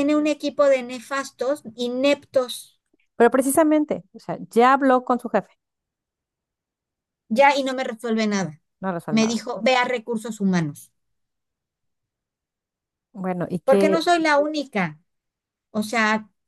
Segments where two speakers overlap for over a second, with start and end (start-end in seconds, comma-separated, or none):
none